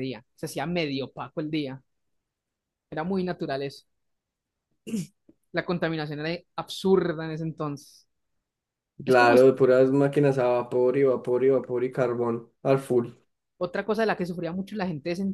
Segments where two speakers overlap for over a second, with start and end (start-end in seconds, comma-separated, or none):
none